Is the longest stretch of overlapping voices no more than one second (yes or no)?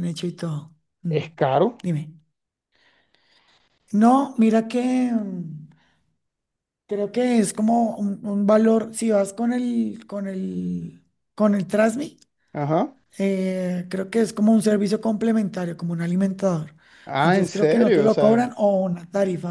no